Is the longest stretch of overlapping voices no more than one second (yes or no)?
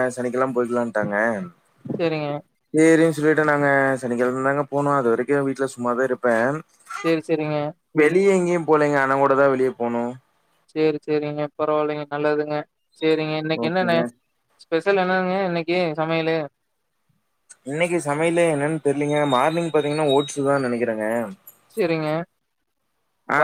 yes